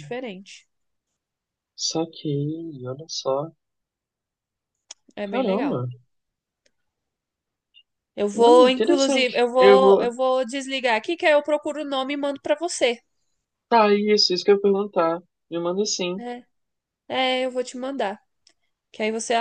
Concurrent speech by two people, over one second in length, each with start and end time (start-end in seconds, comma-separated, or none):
8.3-10.1